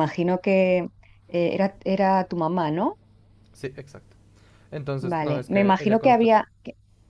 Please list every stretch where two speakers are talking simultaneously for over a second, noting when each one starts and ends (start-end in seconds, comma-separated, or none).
5.0-6.3